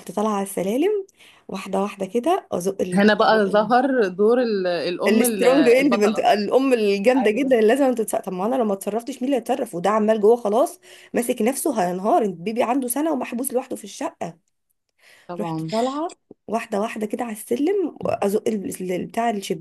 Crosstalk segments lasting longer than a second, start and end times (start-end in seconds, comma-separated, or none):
5.1-6.3